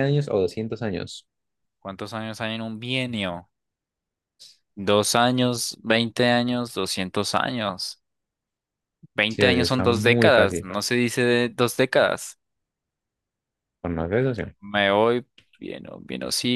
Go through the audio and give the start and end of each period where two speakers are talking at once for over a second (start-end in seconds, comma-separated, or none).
9.3-10.7